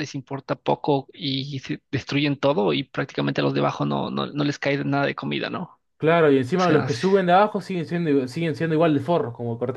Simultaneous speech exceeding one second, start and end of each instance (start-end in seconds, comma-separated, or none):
none